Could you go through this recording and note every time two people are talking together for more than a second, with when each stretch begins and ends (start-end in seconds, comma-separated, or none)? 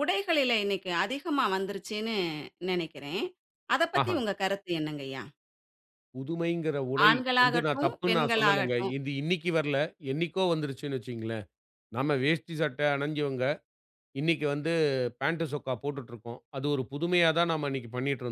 7.1-8.9